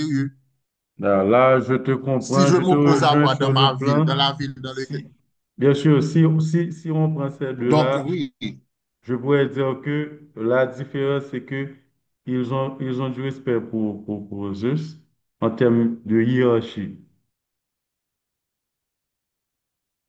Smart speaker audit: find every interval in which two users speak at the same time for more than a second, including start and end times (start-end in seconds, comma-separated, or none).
2.2-4.1